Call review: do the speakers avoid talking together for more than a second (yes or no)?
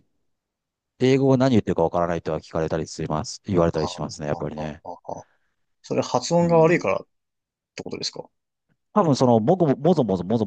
yes